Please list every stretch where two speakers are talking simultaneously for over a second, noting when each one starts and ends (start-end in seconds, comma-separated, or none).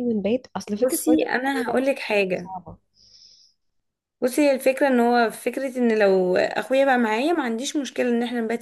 0.7-2.5